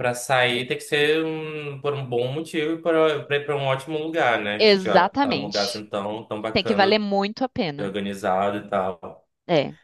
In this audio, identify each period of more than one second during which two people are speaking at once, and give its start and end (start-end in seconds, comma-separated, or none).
4.6-5.8